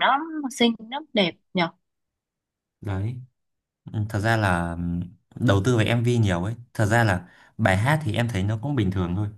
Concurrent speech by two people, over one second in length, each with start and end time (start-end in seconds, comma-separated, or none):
none